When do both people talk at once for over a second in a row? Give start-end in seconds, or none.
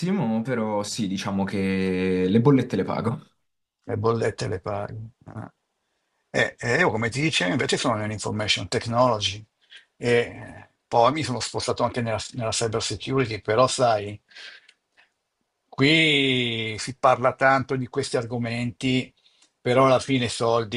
none